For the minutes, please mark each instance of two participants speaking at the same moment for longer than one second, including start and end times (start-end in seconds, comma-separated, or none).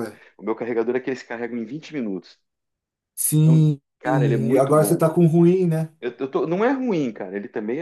3.4-5.1